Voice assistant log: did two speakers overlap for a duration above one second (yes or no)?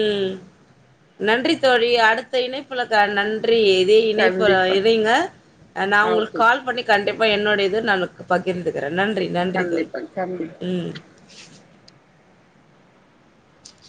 no